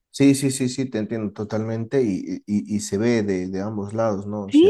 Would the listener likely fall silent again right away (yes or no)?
no